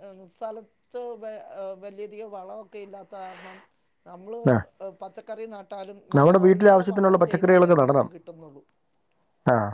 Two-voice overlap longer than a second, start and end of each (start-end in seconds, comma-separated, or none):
6.2-8.1